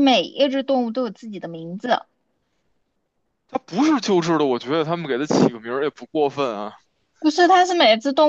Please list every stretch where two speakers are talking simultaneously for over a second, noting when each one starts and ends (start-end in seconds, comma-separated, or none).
none